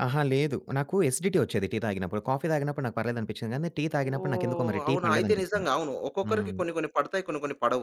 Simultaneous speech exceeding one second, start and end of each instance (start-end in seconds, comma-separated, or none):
4.0-5.7